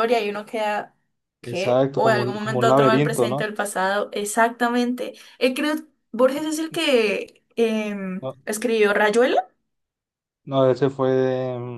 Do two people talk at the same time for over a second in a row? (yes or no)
yes